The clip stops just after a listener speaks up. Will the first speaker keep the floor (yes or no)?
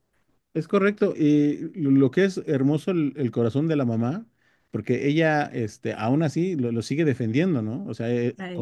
yes